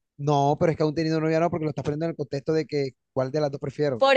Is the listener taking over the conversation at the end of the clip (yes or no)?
yes